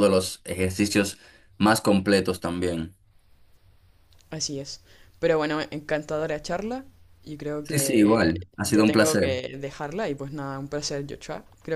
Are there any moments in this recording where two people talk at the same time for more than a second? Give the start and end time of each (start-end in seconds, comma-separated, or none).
7.6-9.4